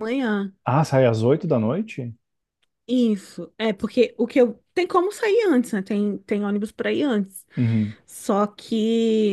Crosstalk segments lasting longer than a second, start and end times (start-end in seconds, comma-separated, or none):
none